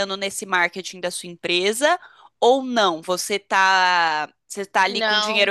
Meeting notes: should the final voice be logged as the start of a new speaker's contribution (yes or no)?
no